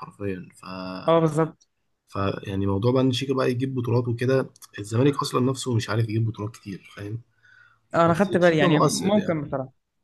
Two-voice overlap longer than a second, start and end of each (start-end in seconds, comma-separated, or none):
8.1-9.4